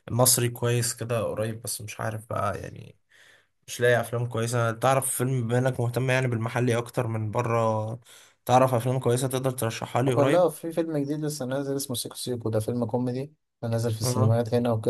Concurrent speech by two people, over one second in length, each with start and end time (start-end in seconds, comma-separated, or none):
none